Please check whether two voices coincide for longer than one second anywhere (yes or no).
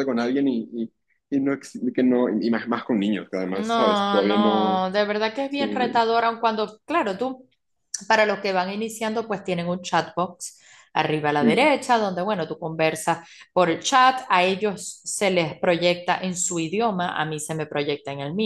yes